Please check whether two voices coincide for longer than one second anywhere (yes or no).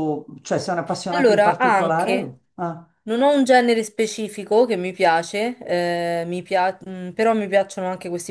yes